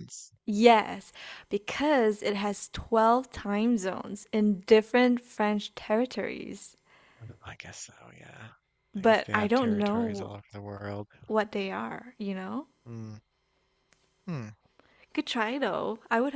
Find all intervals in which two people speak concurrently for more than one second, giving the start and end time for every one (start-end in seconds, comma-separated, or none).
9.0-10.3